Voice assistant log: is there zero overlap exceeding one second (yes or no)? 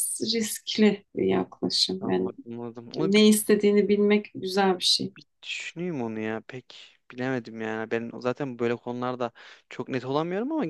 yes